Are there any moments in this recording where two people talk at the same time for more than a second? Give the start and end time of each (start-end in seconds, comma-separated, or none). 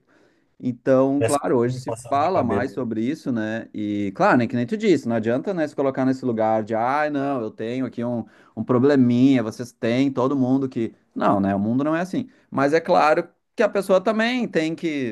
1.2-2.7